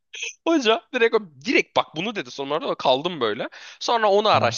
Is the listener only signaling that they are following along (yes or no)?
yes